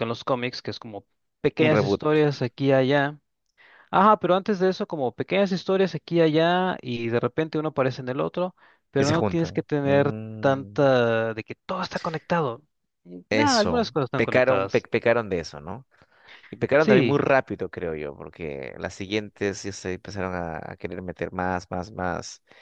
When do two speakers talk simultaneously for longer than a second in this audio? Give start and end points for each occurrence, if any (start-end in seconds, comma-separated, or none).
9.0-10.9, 13.3-14.9